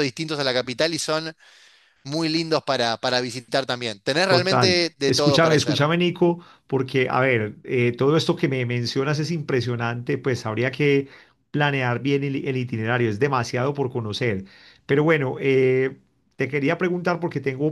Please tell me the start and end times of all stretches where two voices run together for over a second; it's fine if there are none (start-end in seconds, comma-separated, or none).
4.2-5.8